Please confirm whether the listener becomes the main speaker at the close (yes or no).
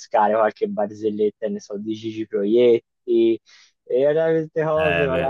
no